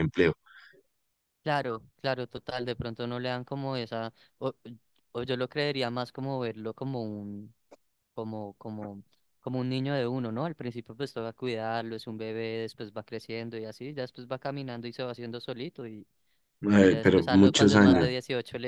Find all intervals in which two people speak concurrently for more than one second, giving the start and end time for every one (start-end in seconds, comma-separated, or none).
16.8-18.1